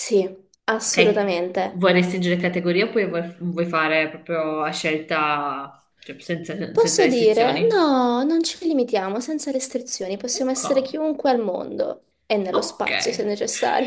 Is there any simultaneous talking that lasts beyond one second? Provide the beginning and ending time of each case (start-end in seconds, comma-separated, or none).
6.7-7.9